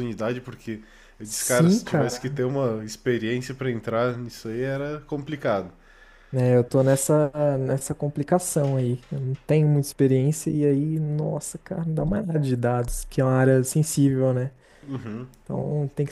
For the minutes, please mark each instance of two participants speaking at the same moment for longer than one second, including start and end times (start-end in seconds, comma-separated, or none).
1.2-2.4